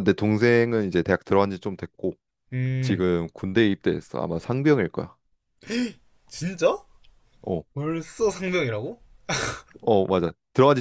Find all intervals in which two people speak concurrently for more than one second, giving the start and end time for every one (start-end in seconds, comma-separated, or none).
none